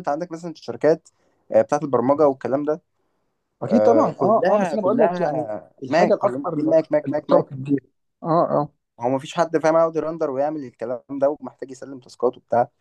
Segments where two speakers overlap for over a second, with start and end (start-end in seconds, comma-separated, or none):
3.7-7.5